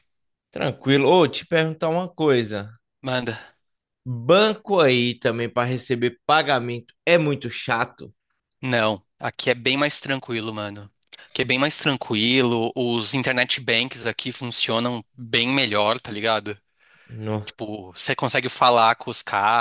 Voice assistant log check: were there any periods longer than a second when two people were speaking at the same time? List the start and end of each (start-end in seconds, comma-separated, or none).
none